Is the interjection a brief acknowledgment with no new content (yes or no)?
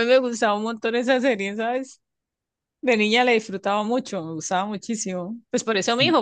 yes